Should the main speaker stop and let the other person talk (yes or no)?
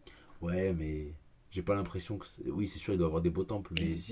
yes